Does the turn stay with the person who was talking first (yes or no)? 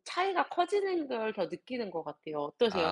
no